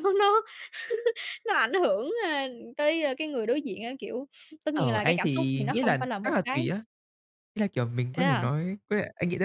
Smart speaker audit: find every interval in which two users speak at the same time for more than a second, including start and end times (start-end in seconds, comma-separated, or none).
4.7-6.7